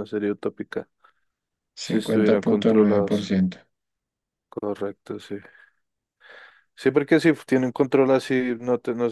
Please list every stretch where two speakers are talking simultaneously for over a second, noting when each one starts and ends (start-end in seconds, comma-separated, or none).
1.8-3.2